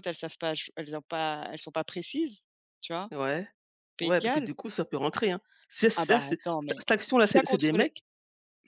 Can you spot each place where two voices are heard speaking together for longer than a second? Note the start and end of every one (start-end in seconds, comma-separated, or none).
6.0-7.9